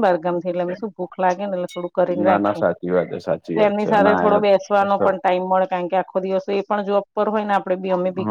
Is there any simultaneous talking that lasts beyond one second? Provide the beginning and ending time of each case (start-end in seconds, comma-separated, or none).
3.5-5.1